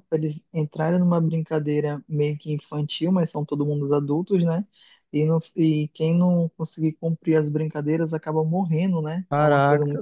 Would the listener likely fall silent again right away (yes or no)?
no